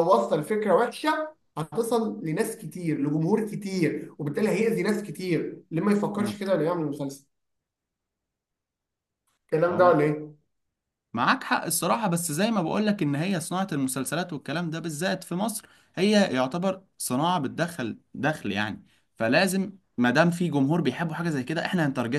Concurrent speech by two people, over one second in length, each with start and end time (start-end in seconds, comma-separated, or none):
none